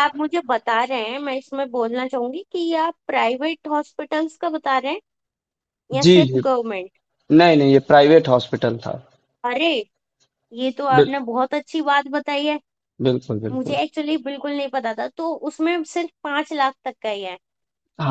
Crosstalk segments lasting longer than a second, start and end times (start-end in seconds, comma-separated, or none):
none